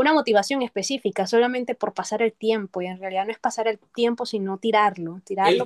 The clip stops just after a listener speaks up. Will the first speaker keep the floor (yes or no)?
no